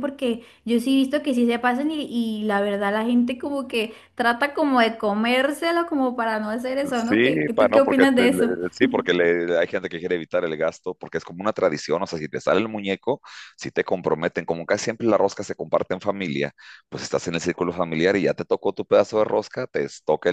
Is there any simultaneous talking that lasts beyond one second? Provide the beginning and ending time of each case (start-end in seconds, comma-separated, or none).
7.1-8.5